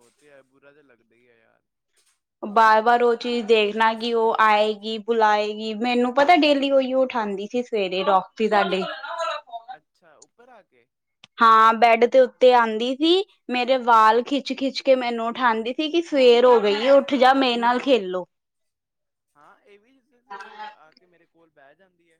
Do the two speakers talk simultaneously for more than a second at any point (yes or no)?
no